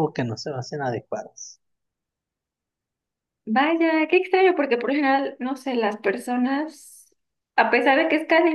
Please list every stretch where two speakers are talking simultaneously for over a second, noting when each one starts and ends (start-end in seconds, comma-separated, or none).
none